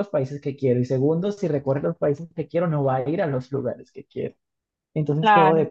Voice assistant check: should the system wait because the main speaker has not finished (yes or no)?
yes